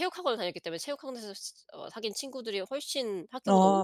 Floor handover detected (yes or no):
yes